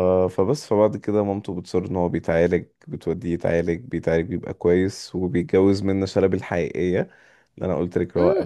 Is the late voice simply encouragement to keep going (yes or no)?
no